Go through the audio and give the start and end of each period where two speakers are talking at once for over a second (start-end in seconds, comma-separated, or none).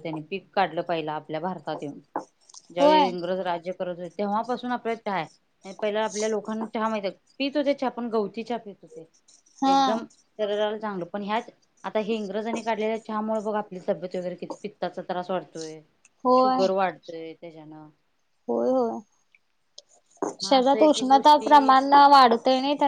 20.4-21.7